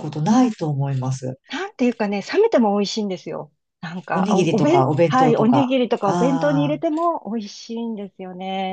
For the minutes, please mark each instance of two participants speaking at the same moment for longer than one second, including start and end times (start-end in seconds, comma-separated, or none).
4.1-7.0